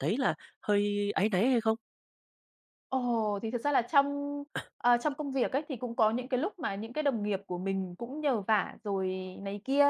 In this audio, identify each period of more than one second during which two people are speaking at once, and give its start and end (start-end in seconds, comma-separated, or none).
none